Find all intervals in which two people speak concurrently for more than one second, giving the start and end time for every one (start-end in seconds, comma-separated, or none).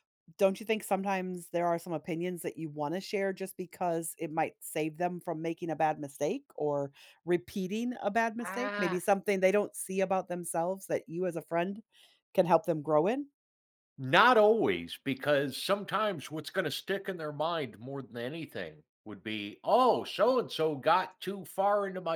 none